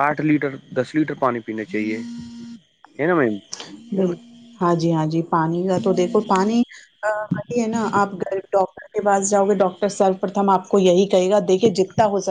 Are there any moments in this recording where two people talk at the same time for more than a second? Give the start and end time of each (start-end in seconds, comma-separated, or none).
none